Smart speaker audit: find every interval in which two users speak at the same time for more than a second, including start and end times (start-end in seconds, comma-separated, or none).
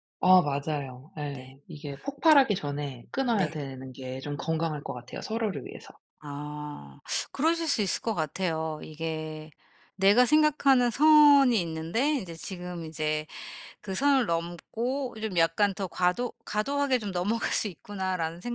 none